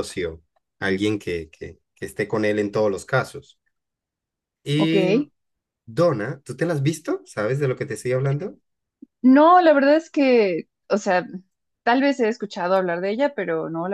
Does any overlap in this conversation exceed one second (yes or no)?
no